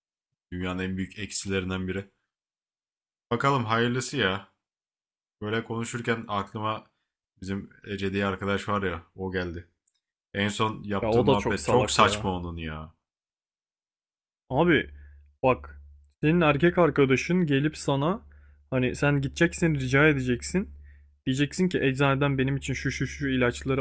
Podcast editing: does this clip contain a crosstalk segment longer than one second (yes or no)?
yes